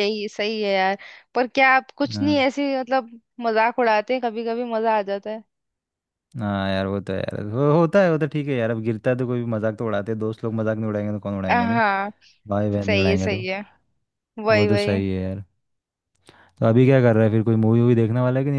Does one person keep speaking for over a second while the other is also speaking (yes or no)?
no